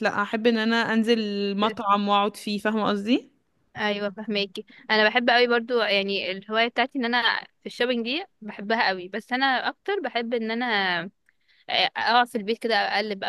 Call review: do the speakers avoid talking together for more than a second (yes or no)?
yes